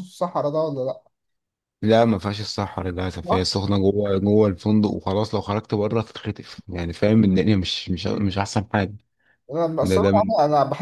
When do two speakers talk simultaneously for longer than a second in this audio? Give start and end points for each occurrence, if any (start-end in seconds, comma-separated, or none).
none